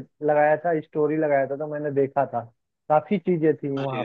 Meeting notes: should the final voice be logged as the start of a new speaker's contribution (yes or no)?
no